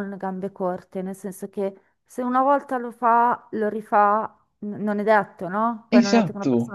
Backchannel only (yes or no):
yes